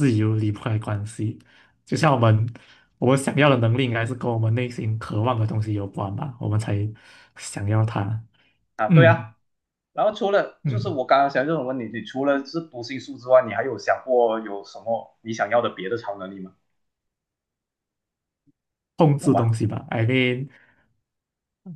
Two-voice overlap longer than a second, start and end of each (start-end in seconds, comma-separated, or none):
none